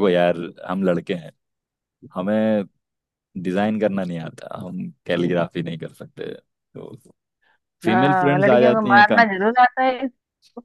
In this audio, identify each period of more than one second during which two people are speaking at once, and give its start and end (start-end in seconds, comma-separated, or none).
7.9-9.2